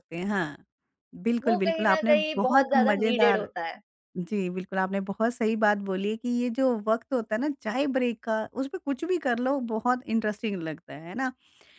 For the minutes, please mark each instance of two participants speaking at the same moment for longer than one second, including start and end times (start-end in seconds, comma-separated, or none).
1.4-3.5